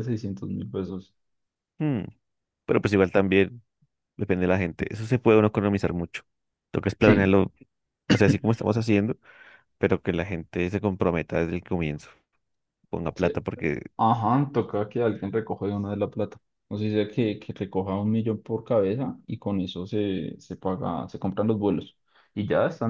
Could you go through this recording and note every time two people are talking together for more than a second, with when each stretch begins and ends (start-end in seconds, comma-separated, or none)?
none